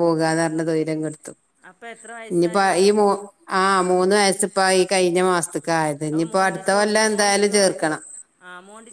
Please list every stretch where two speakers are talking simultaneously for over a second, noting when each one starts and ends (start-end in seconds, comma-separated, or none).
6.1-8.0